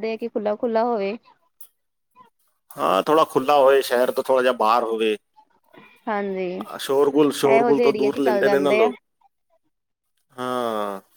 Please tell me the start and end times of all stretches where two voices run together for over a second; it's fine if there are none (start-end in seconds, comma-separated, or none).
7.5-8.9